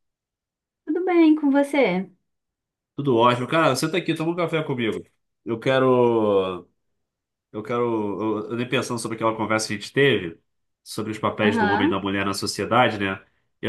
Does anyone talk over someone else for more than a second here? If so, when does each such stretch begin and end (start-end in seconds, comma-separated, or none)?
none